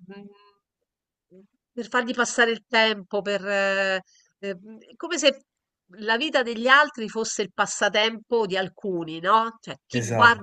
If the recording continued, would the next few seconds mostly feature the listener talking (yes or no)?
no